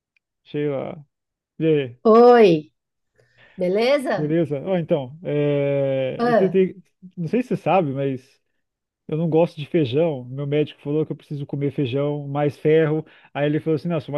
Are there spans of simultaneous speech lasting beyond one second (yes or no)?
no